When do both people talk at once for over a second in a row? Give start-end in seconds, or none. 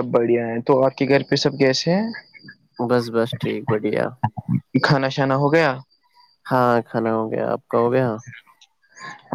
none